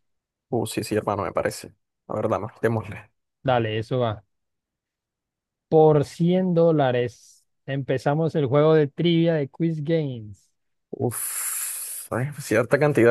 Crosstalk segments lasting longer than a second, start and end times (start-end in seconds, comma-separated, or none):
none